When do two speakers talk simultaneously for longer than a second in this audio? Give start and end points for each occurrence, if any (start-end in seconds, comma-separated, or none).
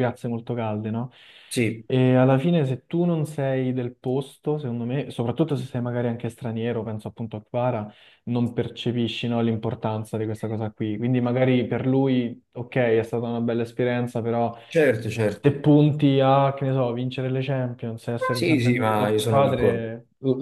18.4-19.9